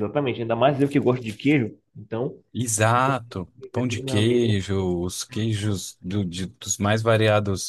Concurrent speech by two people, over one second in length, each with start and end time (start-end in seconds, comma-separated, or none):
3.0-4.6